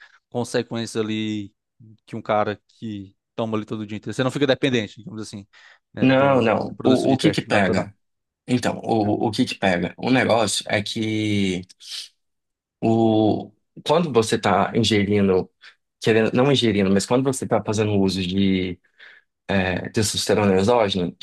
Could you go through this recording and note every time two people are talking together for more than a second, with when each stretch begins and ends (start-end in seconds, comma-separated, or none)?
6.0-7.9